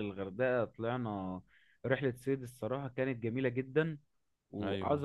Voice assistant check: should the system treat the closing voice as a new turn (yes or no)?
no